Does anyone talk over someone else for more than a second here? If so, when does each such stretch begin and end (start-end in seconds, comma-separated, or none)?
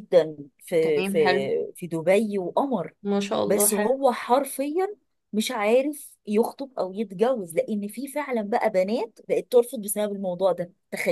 none